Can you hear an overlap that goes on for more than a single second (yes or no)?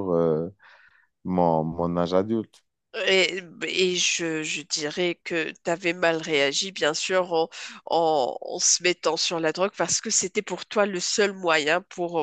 no